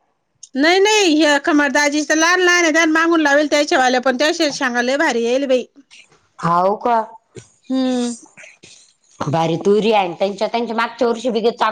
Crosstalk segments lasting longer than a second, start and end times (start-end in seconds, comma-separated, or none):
none